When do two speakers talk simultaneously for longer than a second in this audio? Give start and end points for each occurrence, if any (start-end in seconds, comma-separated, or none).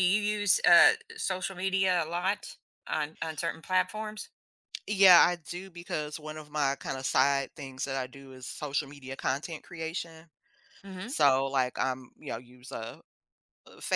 none